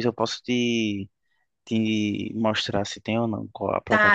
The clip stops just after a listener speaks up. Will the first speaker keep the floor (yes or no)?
no